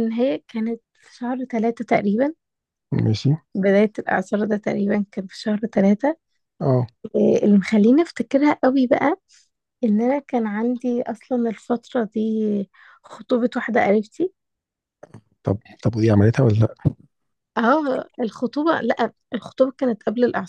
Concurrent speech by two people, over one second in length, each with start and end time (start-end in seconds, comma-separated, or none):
none